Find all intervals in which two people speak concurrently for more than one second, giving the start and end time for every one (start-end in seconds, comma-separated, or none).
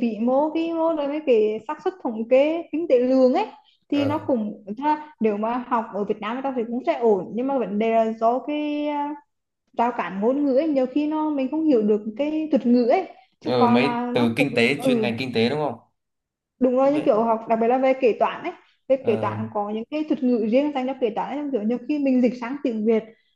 13.4-15.1